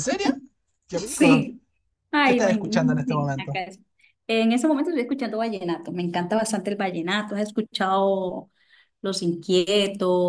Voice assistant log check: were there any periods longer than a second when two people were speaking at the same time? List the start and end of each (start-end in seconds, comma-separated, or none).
2.2-3.6